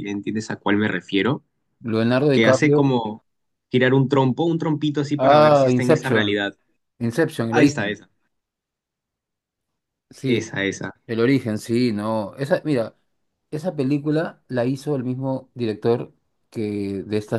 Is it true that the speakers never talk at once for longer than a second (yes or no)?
no